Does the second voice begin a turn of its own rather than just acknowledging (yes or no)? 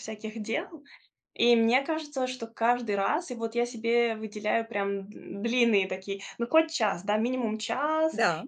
no